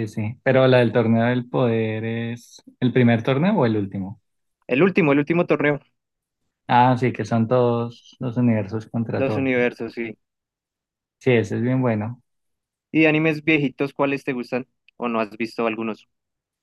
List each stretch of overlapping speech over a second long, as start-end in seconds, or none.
none